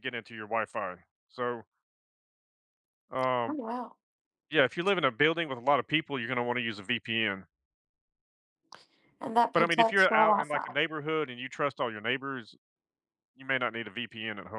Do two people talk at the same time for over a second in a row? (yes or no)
yes